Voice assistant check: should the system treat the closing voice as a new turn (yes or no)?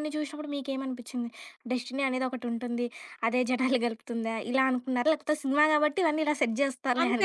yes